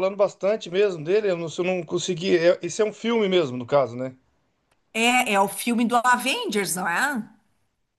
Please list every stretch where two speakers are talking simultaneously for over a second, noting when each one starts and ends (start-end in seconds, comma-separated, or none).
none